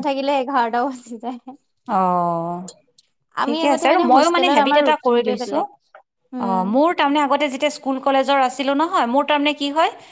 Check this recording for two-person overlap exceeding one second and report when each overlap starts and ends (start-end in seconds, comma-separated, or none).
3.4-5.6